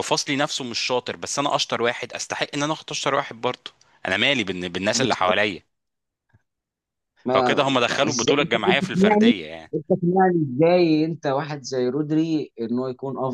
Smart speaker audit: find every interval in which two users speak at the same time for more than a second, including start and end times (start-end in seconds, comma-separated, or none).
7.3-9.3